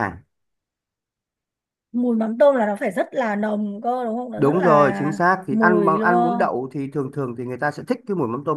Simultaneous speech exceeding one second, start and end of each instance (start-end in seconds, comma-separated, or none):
4.4-6.5